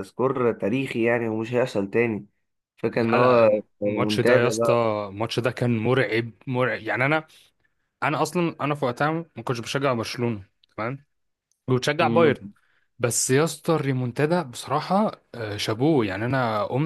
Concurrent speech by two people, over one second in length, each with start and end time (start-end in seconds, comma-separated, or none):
2.9-4.5